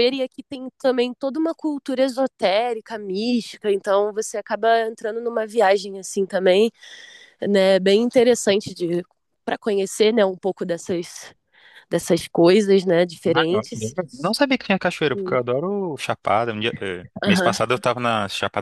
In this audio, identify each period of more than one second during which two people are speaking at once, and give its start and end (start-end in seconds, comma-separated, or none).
none